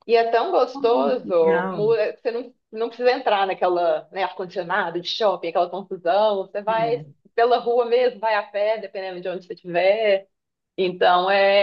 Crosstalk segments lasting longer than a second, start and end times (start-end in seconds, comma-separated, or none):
0.7-1.9